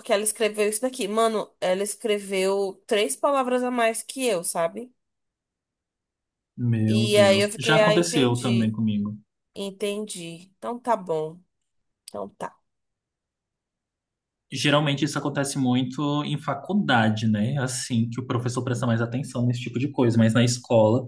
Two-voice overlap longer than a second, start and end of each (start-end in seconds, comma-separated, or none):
6.9-8.8